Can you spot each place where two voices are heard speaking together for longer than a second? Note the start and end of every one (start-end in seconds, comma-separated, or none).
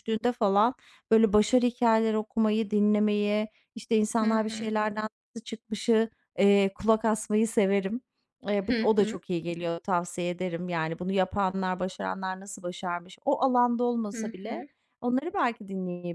none